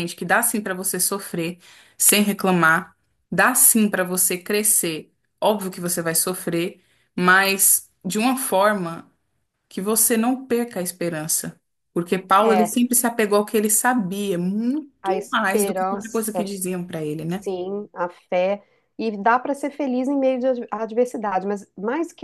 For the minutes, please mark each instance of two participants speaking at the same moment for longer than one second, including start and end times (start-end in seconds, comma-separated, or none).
15.0-16.5